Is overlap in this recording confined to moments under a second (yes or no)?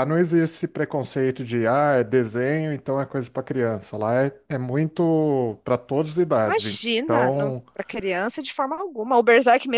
no